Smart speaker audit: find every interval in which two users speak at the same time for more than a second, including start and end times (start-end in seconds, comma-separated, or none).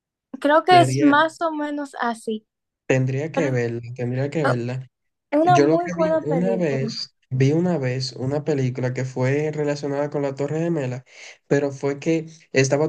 5.4-7.1